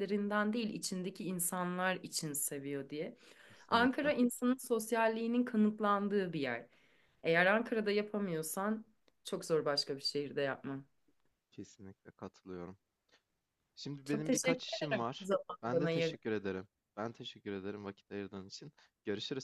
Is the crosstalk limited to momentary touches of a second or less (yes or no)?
no